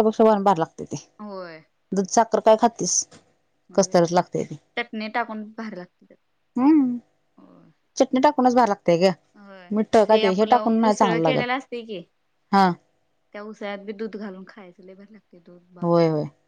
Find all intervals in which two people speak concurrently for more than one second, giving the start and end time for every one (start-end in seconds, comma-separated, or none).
10.2-11.5